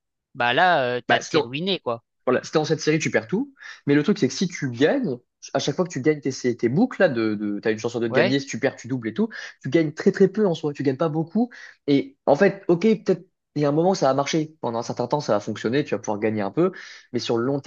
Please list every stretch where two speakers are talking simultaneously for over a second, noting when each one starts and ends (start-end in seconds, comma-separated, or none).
none